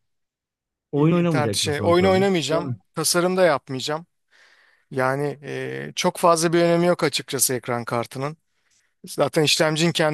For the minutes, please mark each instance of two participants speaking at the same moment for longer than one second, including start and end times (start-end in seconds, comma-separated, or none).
0.9-2.8